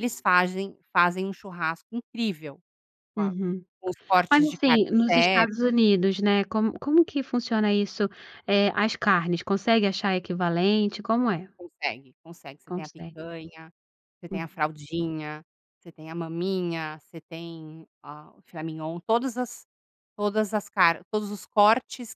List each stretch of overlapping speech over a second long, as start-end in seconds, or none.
4.3-5.7